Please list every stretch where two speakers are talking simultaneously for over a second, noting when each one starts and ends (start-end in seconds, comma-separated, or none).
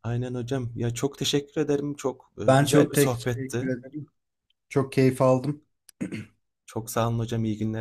2.5-3.7